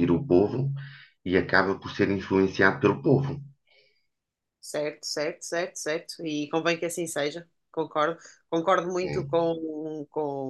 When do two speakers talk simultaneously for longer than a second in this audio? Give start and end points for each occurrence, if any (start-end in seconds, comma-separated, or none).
none